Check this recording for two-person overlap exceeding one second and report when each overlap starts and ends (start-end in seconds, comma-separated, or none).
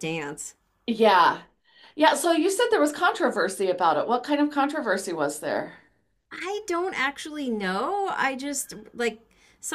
none